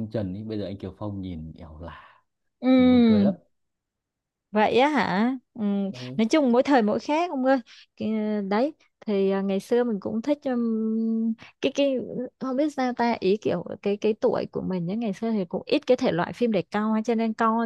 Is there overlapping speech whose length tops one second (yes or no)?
no